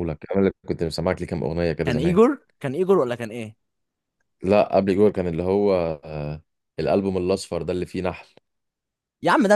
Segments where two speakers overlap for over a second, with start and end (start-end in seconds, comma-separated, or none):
none